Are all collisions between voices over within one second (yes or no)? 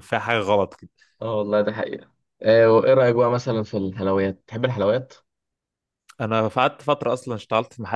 yes